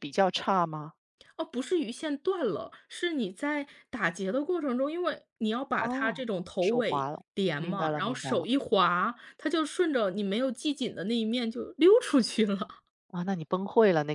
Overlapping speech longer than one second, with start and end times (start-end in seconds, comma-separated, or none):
5.8-8.4